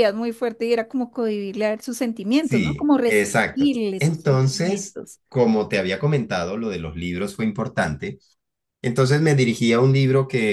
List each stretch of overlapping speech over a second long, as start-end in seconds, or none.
2.4-5.2